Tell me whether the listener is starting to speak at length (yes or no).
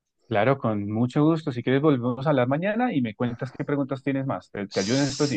yes